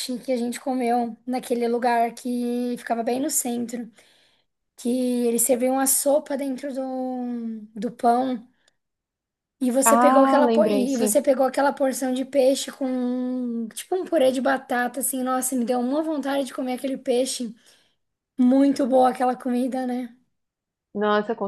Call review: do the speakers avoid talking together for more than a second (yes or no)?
no